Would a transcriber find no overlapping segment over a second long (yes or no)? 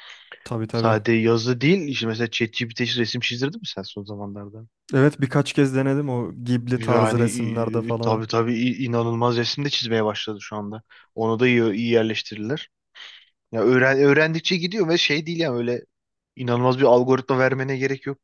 yes